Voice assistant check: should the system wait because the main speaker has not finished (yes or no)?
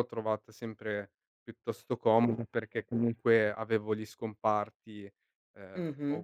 no